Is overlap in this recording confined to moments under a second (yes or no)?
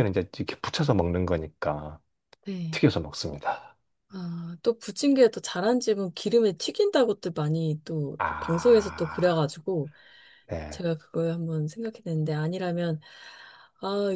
no